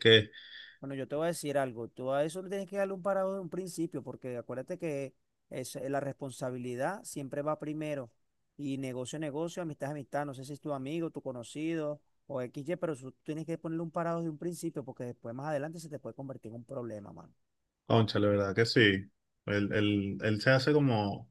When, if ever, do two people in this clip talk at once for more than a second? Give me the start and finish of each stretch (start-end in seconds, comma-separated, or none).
none